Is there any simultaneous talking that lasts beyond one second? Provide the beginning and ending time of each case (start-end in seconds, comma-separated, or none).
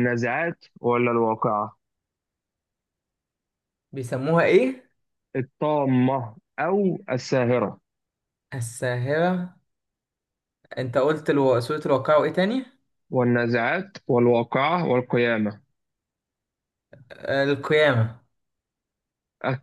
none